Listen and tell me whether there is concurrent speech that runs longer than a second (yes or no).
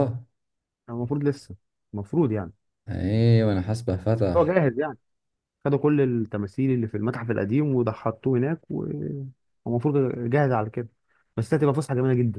no